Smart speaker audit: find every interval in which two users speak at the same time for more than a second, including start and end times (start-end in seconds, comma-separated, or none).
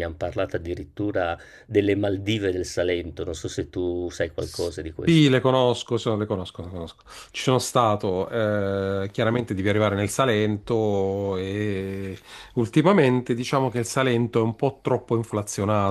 none